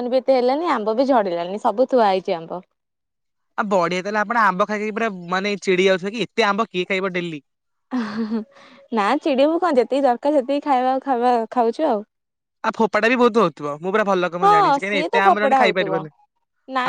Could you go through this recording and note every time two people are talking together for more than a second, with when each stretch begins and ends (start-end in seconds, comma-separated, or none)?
14.4-15.9